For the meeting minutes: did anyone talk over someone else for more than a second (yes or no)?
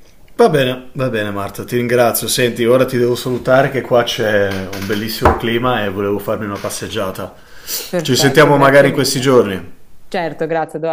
yes